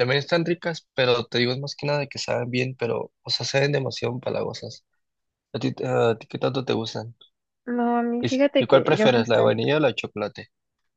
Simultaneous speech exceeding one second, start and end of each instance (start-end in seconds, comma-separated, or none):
8.2-9.4